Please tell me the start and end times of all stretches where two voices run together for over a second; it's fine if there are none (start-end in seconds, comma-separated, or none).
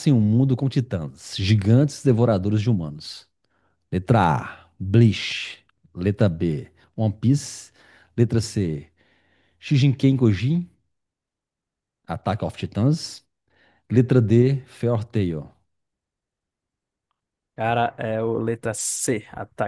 none